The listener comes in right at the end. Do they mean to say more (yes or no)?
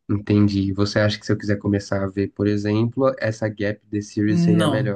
yes